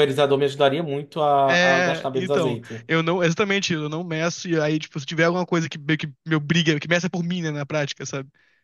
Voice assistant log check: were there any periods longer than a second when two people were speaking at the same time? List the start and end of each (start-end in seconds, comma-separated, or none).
1.5-2.9